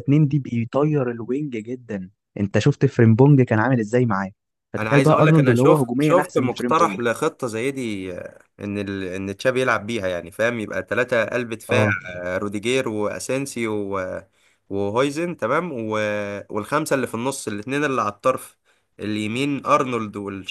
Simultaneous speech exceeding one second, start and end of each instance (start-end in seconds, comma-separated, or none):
4.8-7.0